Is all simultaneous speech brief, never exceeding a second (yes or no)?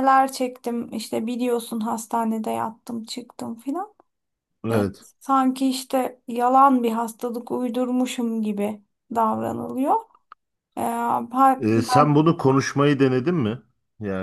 yes